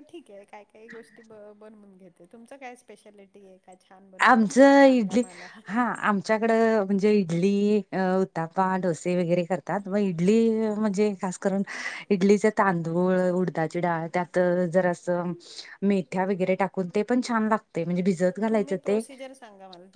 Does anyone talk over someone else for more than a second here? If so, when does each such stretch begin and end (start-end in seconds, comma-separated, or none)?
none